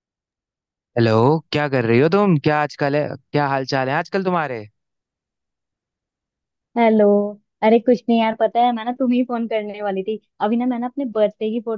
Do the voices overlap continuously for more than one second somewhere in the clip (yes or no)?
no